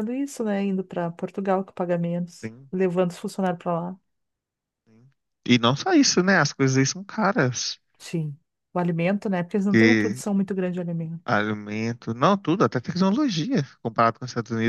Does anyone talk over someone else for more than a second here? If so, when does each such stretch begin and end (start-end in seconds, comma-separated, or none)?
none